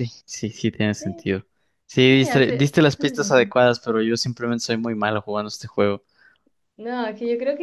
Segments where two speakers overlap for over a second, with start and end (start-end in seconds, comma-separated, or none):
2.1-3.5